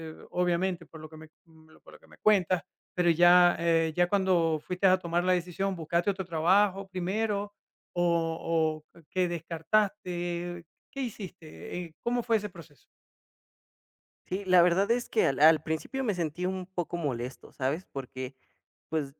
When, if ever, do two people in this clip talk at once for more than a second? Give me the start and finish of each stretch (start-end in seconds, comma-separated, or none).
none